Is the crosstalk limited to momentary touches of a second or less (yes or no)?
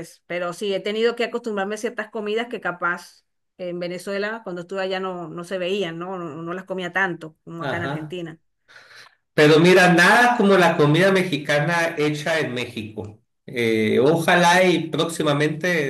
yes